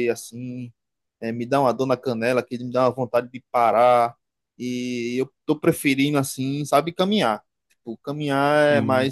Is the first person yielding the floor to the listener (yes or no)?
no